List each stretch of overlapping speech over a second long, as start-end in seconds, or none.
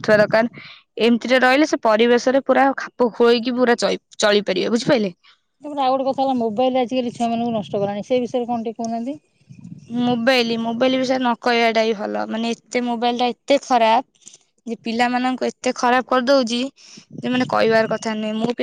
none